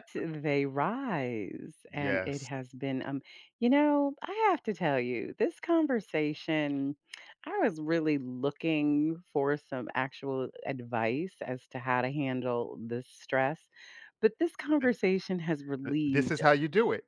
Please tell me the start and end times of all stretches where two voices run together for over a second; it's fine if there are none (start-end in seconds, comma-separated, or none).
none